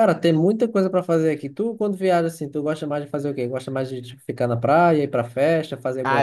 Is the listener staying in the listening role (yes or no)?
no